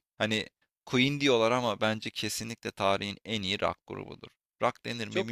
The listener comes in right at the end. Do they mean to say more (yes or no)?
yes